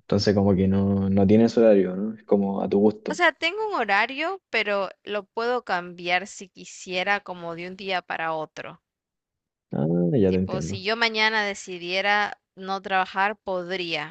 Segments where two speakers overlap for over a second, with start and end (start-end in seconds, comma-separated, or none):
none